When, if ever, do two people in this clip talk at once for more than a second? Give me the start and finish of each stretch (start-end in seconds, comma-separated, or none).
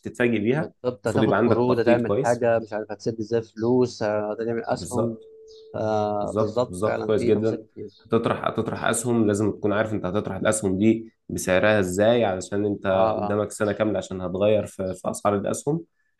0.6-2.5, 6.2-7.7